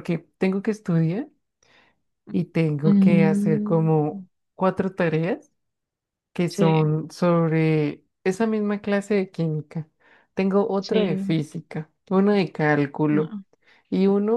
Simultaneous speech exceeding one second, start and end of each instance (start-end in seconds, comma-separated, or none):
2.8-4.2